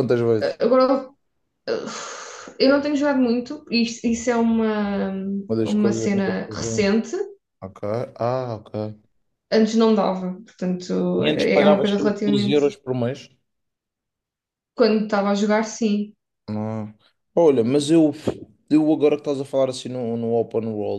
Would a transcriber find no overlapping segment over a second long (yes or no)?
no